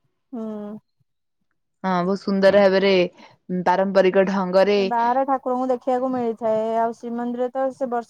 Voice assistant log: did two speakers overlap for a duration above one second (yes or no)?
no